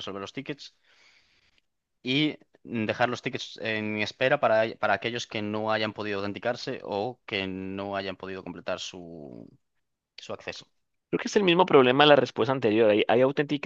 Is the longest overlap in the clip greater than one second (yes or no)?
no